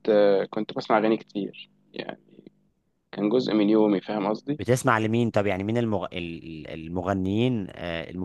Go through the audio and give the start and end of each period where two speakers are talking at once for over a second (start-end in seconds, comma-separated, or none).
none